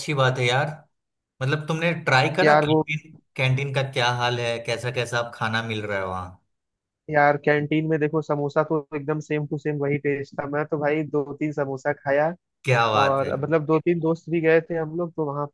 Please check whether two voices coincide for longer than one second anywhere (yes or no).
no